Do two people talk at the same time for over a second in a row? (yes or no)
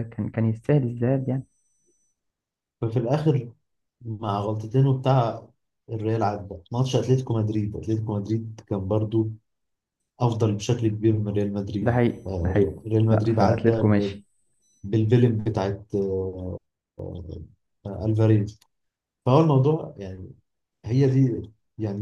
yes